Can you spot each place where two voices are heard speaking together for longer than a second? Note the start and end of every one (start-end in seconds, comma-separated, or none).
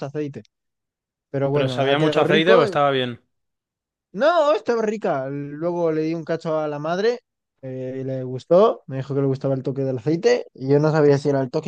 1.5-2.8